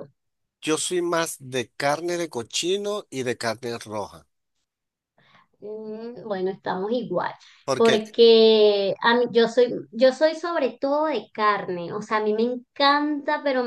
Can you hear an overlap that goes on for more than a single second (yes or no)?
no